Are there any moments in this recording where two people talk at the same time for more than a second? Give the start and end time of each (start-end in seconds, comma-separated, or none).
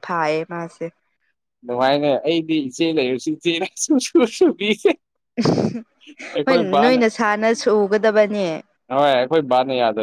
none